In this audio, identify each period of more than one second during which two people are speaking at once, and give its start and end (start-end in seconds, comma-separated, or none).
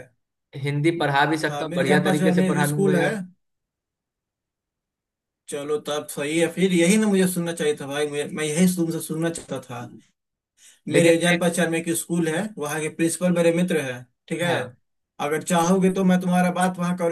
1.5-3.1